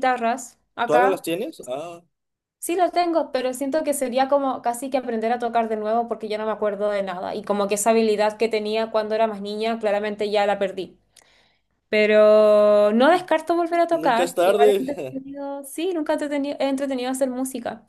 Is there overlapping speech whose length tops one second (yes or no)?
yes